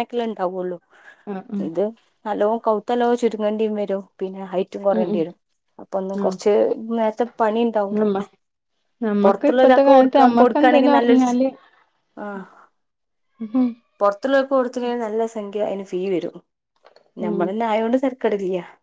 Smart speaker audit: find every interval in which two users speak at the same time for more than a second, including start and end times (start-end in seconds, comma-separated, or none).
9.2-11.2